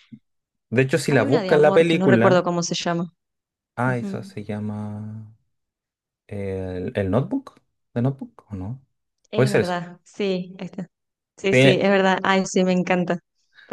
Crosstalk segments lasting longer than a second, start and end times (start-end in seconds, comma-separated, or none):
1.1-2.5